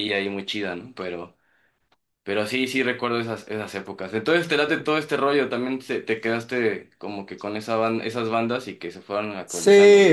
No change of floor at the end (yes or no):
no